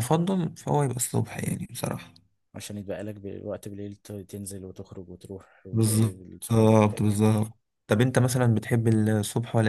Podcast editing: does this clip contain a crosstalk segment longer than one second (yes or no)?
yes